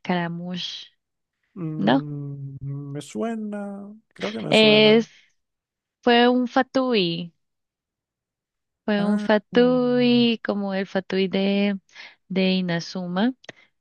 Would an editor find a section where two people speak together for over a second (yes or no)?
yes